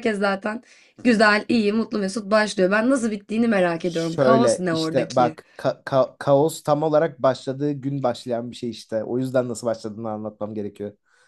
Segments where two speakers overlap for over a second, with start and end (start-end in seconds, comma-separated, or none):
3.8-5.4